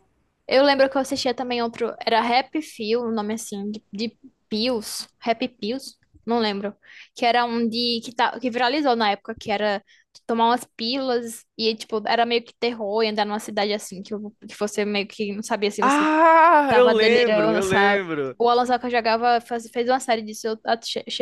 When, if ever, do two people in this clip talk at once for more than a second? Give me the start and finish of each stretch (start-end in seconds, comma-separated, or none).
16.7-18.4